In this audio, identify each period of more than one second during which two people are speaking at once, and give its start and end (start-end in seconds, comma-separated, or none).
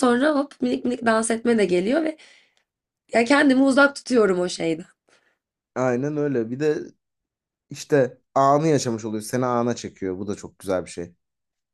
none